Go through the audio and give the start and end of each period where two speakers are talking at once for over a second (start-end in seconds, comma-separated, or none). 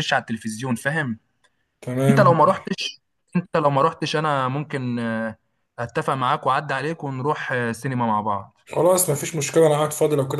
none